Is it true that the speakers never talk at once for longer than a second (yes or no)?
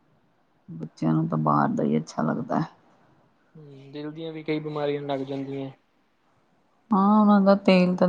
yes